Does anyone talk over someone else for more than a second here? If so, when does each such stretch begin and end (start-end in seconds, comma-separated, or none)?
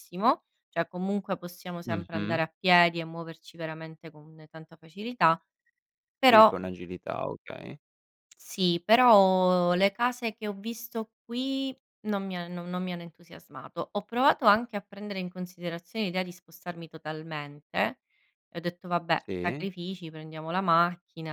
none